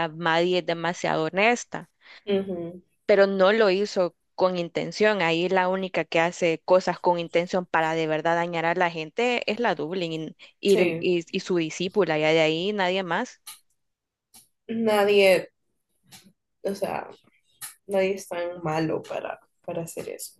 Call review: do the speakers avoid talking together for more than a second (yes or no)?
yes